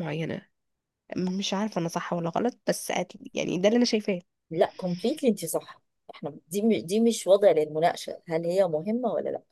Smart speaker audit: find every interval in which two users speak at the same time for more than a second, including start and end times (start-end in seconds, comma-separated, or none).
none